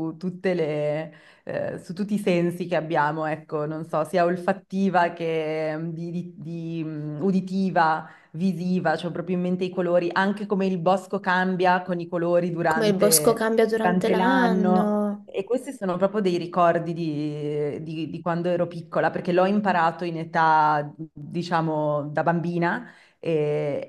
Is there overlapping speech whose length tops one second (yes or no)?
yes